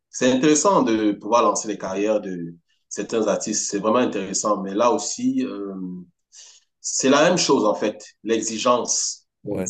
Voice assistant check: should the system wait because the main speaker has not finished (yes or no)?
no